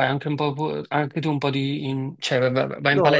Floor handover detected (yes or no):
yes